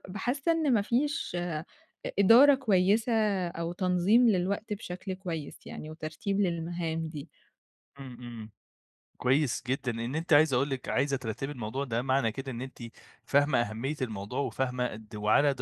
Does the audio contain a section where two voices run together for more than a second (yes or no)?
no